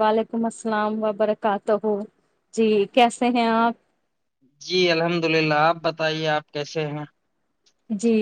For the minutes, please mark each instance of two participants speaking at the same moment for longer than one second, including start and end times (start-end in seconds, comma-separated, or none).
none